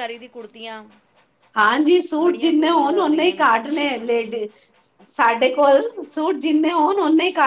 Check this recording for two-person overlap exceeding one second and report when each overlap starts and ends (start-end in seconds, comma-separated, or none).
2.2-3.5